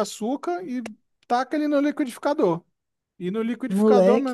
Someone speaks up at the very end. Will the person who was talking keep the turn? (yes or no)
yes